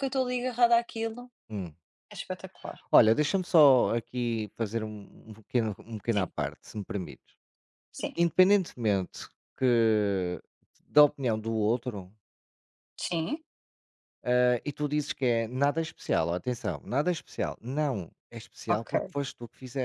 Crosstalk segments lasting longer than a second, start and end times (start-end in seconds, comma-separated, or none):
none